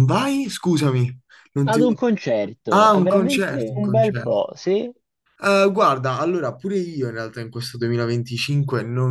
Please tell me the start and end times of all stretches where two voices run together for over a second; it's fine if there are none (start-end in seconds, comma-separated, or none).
2.7-4.4